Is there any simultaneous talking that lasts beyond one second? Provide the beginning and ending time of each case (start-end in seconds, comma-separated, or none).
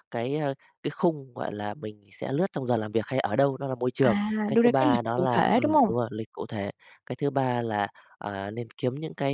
4.0-5.9